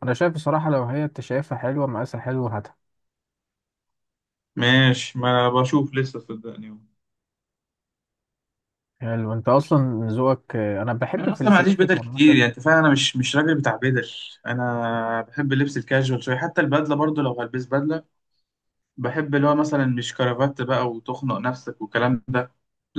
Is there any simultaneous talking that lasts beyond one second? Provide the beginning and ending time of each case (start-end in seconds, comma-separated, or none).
11.2-12.4